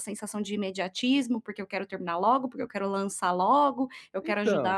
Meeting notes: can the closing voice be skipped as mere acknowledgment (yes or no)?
yes